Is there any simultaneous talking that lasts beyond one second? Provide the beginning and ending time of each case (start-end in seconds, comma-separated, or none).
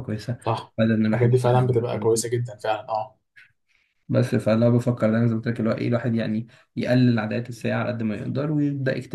0.8-2.2